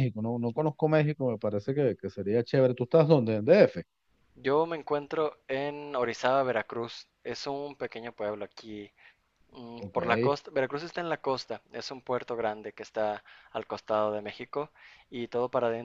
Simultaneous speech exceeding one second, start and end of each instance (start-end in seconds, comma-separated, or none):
none